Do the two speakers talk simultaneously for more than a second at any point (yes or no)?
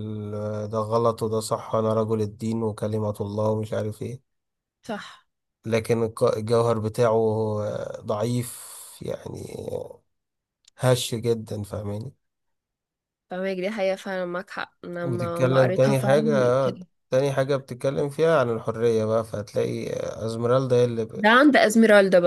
yes